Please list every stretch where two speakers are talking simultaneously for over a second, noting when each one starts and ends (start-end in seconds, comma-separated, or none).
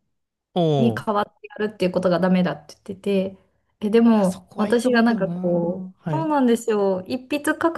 4.1-5.3